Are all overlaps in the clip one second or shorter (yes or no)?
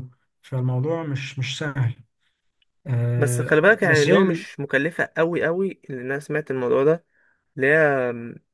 no